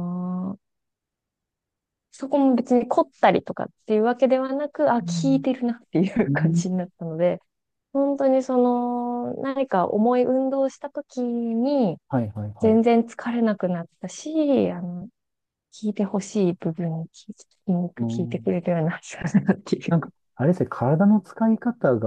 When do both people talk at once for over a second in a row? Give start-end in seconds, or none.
none